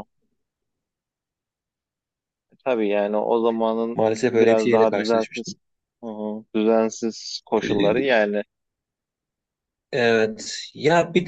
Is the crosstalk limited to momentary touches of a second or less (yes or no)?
no